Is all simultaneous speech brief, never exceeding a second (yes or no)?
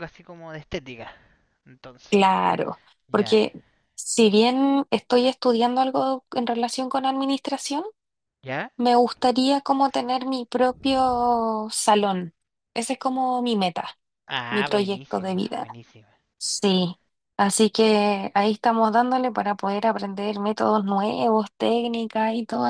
no